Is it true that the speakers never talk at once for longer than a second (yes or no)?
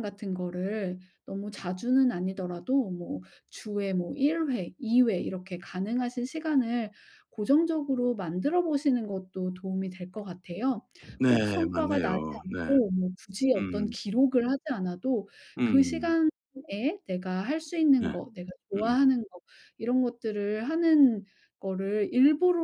no